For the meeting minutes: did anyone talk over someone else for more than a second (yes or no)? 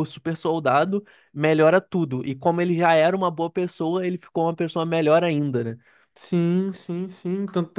no